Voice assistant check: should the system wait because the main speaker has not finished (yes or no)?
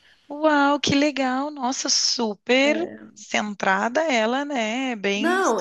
no